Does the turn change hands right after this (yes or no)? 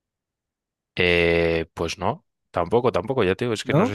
no